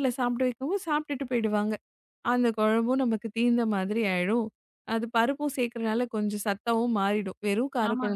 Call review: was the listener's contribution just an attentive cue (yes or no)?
no